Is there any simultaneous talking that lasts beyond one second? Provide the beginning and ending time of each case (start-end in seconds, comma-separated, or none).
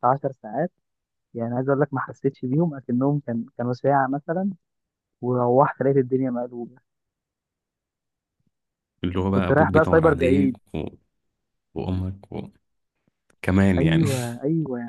9.3-10.6